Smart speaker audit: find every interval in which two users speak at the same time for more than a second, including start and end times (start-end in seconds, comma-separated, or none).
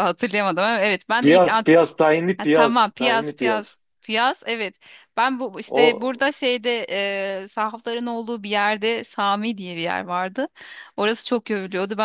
2.4-3.8